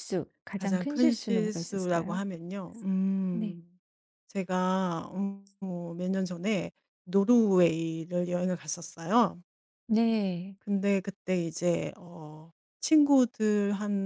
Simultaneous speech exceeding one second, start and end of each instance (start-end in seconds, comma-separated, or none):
0.5-2.2